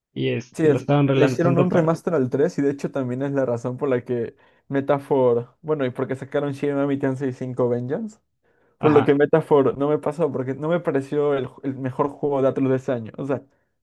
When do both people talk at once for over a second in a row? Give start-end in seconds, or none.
0.5-2.0